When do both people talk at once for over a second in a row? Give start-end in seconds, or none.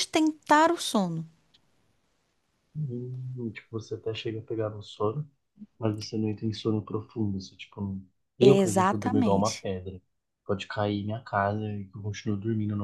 8.4-9.7